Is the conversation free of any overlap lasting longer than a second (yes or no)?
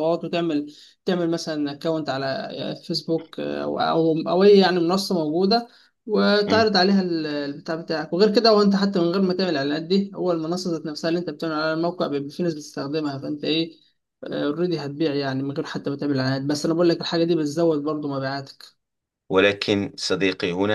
yes